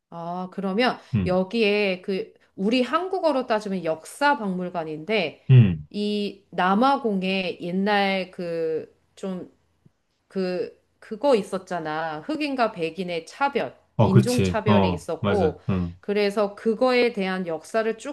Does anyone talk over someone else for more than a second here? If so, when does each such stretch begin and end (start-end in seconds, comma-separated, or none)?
14.0-15.6